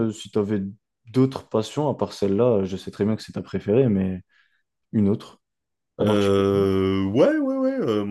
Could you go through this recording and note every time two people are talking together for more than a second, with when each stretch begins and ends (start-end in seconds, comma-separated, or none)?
none